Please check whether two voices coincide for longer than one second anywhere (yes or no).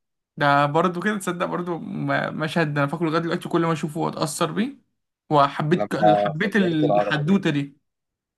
yes